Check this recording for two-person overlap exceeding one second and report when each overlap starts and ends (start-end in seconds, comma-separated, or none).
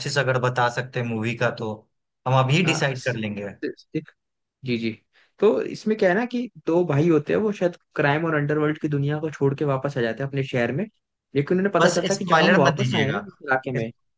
11.8-13.2